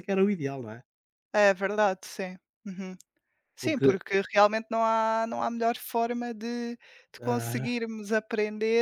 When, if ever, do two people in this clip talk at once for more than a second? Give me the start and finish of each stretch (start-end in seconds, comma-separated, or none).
none